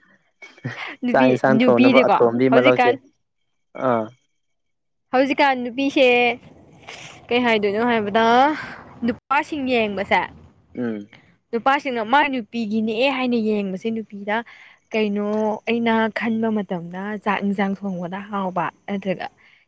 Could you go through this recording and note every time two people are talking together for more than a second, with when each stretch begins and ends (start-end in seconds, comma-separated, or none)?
1.1-2.9